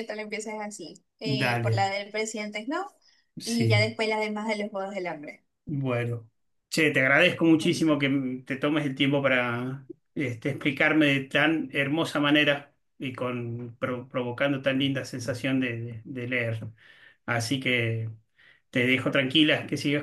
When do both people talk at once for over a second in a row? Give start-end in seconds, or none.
none